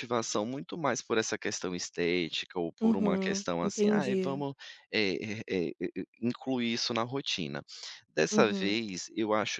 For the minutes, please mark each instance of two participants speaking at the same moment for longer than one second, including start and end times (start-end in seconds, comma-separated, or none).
2.8-4.3